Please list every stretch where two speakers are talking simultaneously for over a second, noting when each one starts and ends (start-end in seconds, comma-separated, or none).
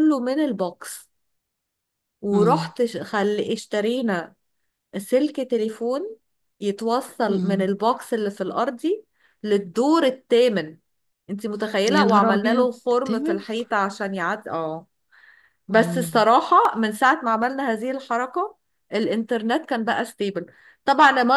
11.9-13.4